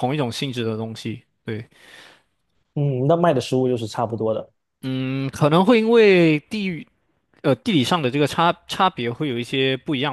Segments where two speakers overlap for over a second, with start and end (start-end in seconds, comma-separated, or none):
none